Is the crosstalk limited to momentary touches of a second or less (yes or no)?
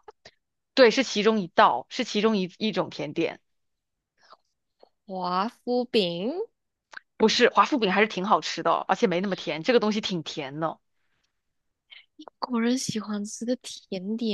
yes